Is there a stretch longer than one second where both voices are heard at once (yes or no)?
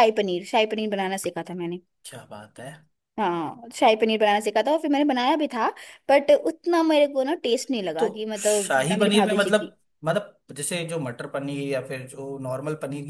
yes